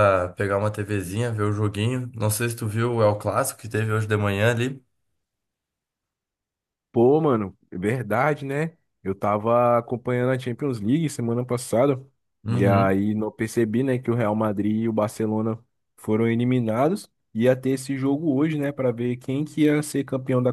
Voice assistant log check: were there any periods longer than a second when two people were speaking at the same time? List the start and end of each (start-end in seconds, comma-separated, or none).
none